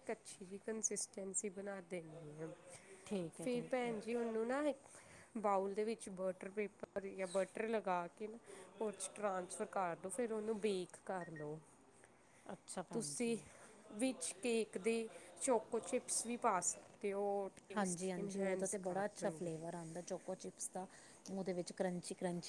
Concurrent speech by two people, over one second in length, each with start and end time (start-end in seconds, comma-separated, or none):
17.8-19.5